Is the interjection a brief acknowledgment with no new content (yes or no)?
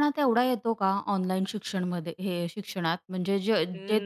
yes